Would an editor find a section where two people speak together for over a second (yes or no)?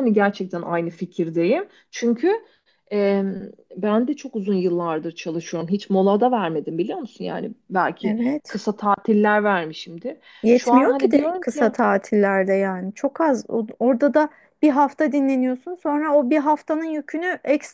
yes